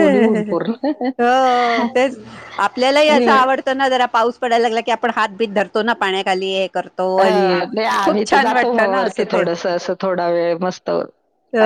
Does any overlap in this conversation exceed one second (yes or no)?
no